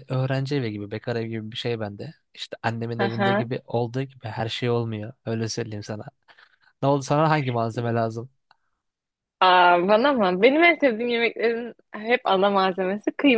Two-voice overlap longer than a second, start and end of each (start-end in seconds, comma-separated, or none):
none